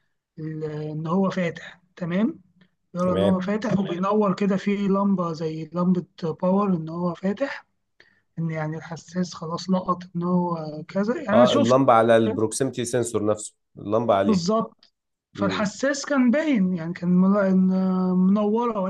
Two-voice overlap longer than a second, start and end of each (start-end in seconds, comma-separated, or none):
none